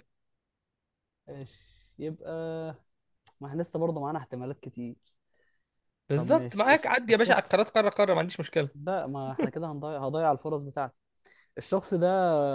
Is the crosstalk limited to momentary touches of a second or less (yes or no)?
no